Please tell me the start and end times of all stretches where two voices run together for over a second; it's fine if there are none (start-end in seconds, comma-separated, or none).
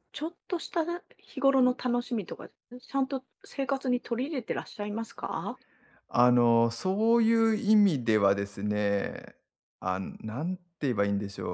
none